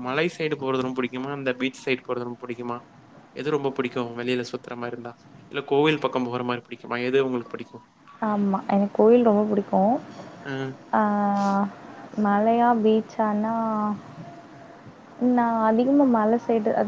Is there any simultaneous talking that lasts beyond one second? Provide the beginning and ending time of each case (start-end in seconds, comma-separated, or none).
none